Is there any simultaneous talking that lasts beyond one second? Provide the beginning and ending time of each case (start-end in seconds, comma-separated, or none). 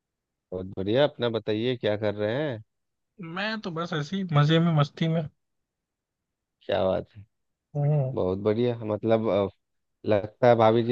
none